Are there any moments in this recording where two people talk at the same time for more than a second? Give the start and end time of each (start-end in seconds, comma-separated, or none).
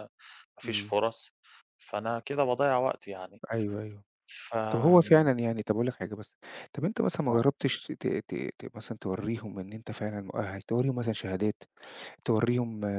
none